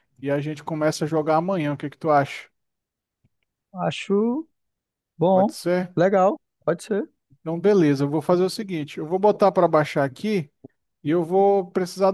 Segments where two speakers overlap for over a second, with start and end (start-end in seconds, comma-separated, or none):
none